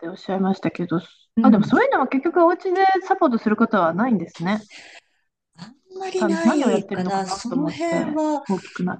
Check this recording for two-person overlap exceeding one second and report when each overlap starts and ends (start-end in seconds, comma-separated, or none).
6.2-8.4